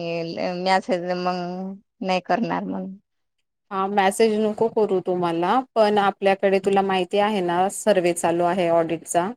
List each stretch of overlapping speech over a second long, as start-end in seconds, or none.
none